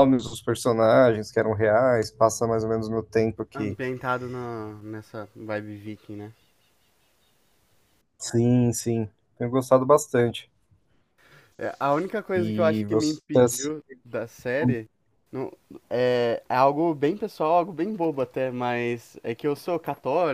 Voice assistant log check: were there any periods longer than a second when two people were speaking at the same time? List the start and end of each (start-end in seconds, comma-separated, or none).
12.3-13.7